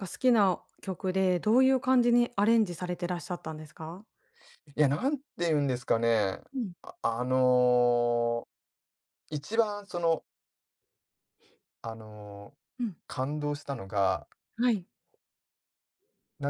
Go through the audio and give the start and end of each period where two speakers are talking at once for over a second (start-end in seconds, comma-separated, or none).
none